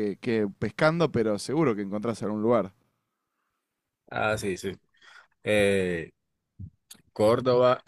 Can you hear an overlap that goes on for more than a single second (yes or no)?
no